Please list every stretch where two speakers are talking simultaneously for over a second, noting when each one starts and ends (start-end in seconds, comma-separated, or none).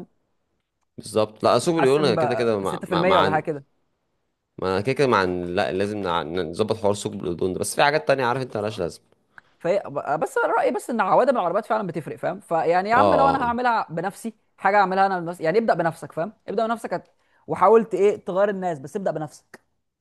1.6-3.4